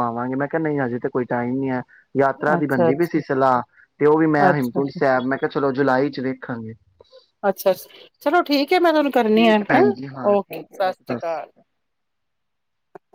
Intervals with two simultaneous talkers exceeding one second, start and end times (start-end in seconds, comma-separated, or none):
none